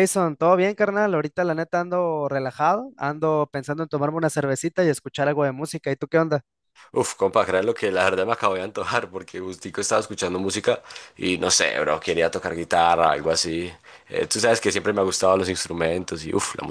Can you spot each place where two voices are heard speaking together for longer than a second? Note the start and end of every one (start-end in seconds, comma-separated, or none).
none